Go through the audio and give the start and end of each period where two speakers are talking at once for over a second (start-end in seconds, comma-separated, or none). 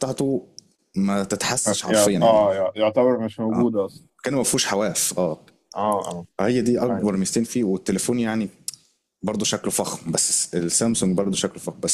none